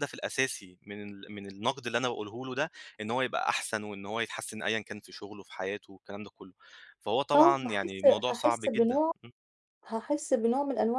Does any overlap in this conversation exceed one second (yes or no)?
yes